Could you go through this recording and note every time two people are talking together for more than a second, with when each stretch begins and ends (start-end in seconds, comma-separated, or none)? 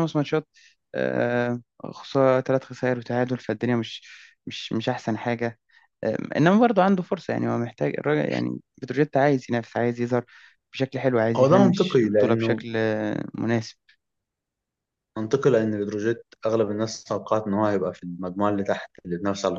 11.3-12.6